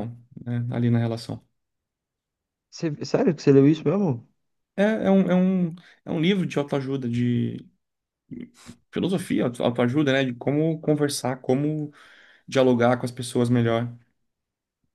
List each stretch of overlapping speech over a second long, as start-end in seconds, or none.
none